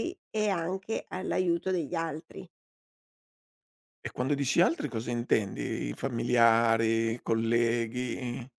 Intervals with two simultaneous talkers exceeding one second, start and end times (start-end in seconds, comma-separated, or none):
none